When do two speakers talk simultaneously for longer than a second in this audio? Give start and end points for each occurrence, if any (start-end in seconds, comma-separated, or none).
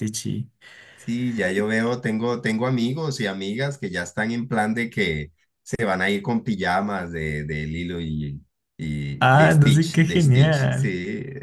9.2-10.9